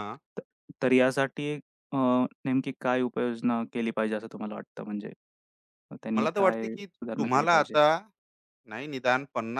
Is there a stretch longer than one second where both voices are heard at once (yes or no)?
yes